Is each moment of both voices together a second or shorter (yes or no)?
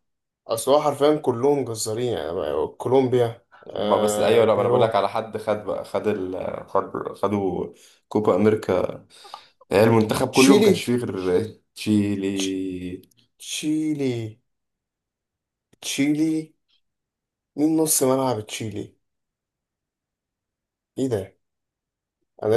no